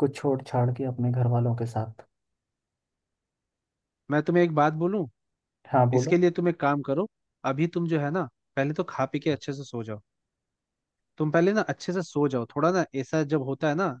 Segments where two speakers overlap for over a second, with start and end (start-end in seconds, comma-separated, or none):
none